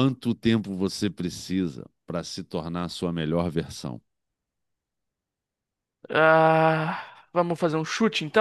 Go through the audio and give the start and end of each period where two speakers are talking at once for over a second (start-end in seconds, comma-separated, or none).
none